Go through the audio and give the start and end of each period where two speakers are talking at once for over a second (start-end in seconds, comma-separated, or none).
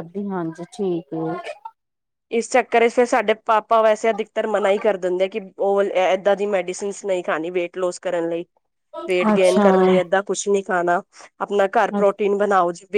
none